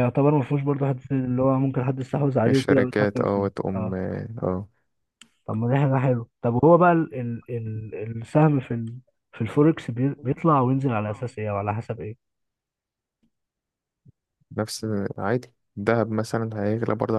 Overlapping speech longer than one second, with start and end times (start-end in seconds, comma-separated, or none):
2.5-3.9